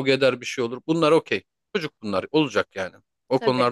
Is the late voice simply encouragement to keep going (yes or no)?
yes